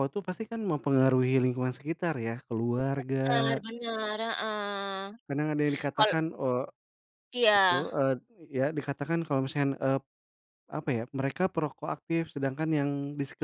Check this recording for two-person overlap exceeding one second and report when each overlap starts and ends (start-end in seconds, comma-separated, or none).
none